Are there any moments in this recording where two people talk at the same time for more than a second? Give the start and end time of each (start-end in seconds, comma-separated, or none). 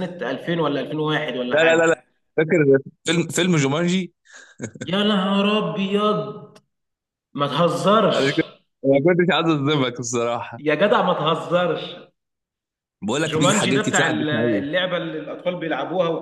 13.2-14.6